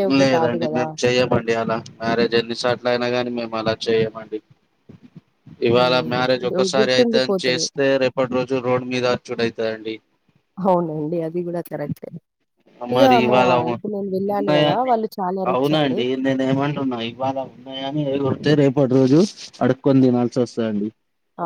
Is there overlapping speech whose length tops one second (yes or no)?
yes